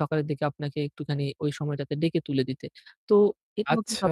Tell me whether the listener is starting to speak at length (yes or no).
no